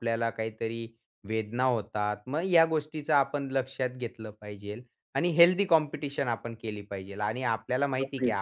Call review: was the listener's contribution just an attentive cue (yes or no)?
yes